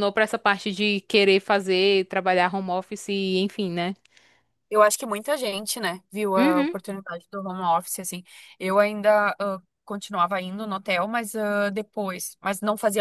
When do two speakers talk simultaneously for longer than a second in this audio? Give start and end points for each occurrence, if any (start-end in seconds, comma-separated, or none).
none